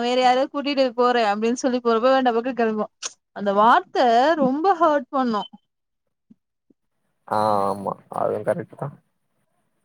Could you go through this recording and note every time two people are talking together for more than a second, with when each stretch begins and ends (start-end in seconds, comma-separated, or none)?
none